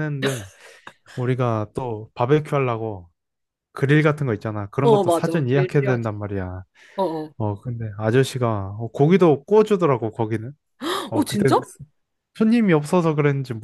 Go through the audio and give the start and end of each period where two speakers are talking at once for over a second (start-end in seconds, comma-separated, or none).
4.8-6.1